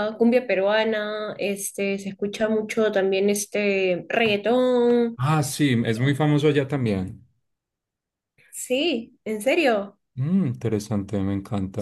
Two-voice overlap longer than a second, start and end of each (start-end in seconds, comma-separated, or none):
none